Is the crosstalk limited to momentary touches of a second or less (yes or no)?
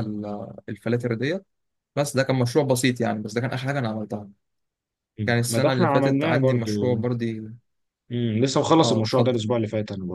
no